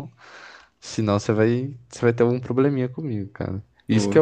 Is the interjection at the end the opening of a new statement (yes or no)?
no